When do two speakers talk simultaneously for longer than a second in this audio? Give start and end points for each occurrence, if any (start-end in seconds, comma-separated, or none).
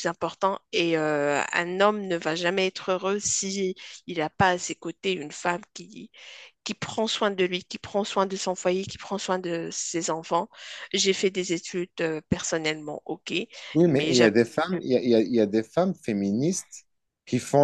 none